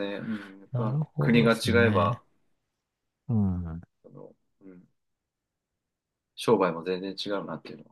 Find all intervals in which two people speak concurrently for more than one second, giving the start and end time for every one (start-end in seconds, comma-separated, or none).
0.7-2.2